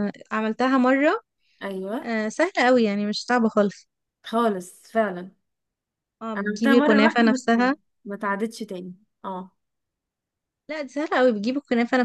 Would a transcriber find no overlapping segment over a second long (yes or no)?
no